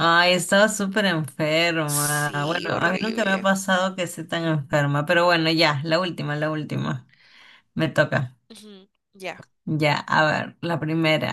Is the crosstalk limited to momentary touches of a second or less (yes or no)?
no